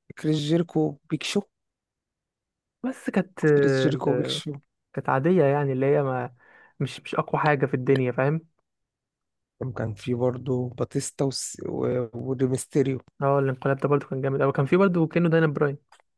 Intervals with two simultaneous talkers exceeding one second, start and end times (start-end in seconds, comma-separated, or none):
none